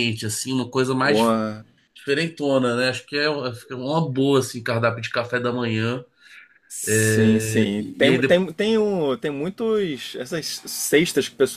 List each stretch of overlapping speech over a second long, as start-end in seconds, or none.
6.9-8.4